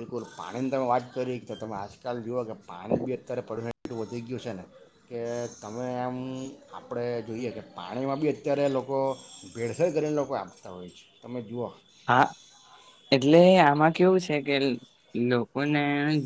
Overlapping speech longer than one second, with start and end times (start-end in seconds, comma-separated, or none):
none